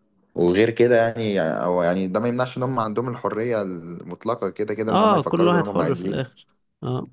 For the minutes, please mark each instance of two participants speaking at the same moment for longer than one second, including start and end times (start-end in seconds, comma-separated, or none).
4.9-6.2